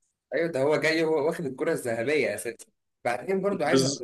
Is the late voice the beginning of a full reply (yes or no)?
no